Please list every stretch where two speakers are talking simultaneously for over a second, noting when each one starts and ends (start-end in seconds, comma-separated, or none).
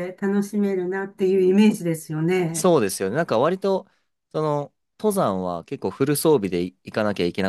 none